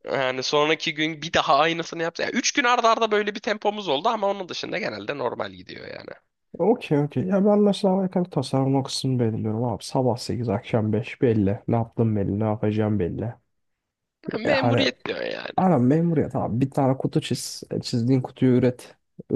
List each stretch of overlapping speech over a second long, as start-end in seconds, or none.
none